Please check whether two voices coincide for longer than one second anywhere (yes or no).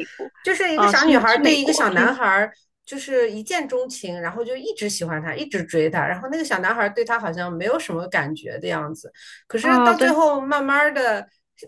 yes